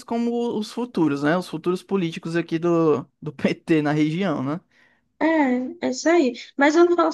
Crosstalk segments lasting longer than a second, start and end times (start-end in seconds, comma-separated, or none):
none